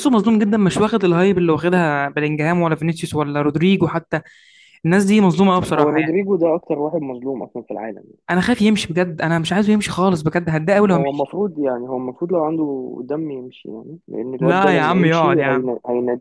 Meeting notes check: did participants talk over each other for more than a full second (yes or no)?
yes